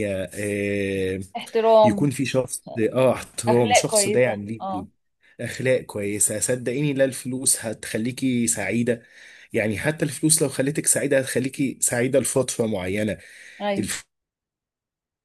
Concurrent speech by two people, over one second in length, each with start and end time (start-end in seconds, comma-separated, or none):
3.5-4.9